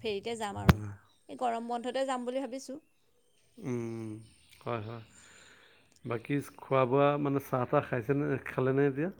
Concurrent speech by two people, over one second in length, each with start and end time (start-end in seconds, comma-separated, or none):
none